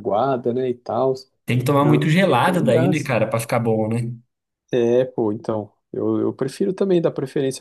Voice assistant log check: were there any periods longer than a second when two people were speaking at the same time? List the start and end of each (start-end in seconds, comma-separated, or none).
1.8-3.1